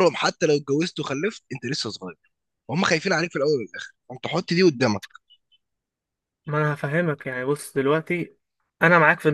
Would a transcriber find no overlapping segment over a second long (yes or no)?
yes